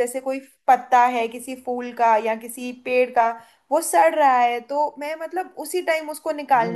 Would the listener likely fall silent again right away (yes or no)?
no